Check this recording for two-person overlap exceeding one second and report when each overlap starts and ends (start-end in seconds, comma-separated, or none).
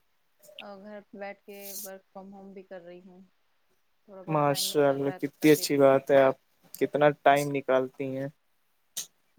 4.3-5.9